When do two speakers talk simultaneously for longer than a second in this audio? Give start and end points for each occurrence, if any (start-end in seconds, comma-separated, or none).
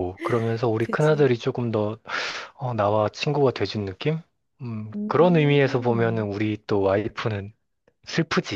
4.9-6.3